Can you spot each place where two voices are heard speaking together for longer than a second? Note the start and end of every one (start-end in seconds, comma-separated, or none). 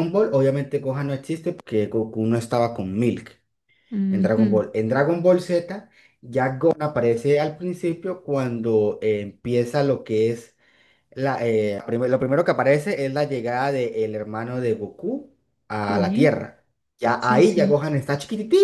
none